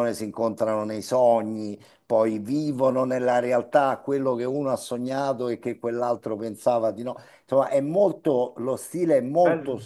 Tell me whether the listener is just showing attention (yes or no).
yes